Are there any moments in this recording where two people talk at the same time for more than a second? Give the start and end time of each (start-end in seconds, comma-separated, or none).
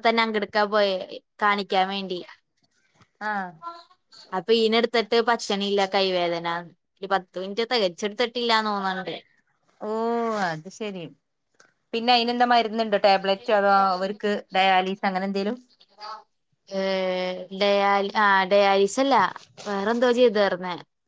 none